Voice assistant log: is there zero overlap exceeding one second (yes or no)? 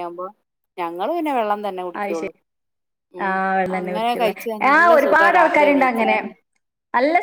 no